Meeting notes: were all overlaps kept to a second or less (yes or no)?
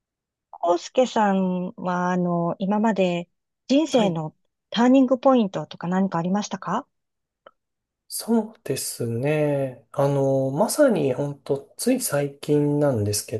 yes